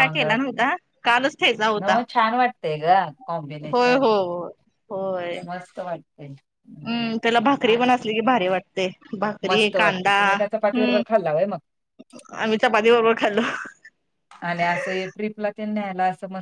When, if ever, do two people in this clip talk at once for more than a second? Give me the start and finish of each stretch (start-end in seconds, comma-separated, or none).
9.5-11.0